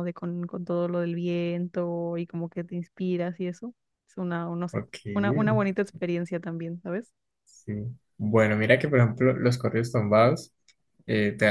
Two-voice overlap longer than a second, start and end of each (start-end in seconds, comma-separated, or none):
none